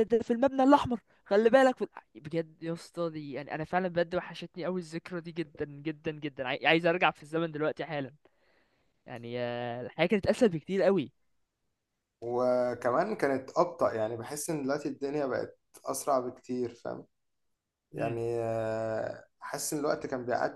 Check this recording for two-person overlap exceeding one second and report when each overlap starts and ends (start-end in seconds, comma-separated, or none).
none